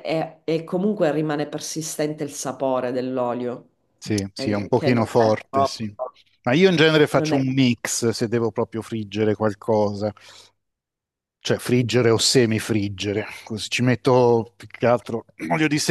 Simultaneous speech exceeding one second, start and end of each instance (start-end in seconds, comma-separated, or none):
4.3-5.8